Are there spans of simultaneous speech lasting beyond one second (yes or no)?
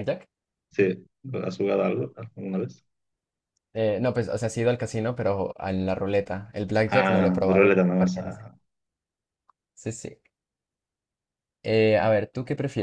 yes